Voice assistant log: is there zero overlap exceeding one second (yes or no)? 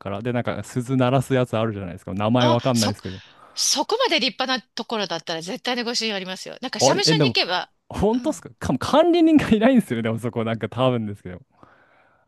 yes